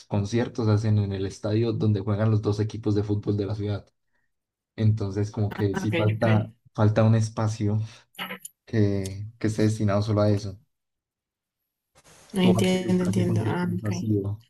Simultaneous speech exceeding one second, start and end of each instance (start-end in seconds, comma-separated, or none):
12.4-13.9